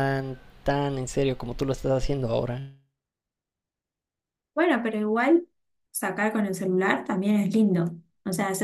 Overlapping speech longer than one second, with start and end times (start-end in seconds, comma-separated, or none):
none